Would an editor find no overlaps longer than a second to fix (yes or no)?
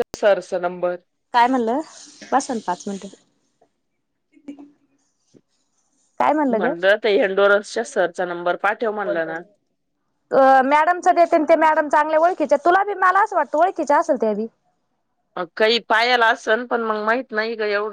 yes